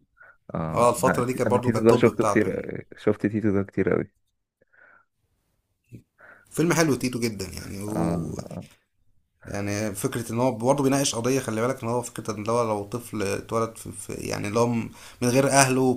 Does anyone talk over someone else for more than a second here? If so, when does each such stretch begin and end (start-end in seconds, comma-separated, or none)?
0.7-2.6